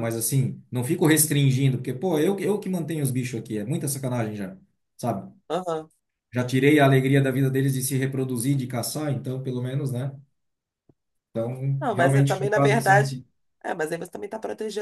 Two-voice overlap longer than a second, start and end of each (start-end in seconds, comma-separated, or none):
11.8-13.1